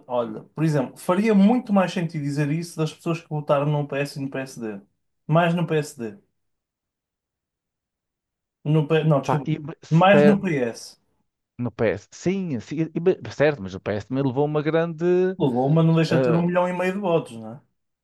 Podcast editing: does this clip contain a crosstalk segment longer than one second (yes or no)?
no